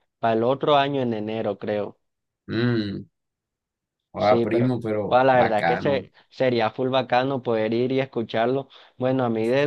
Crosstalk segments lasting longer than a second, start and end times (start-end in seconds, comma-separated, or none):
4.2-6.0